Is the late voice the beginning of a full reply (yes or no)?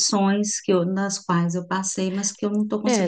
yes